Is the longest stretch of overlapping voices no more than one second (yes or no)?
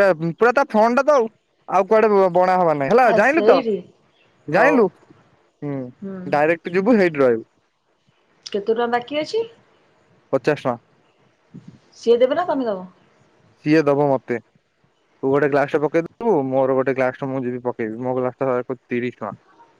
yes